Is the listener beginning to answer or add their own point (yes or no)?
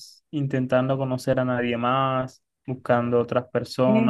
yes